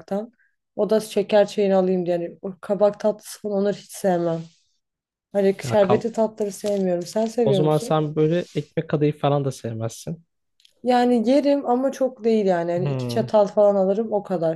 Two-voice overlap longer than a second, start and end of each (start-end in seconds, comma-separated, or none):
none